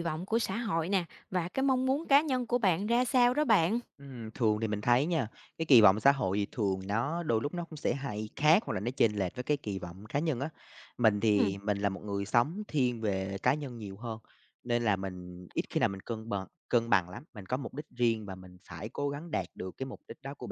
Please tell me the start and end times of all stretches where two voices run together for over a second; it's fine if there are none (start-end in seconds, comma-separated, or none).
none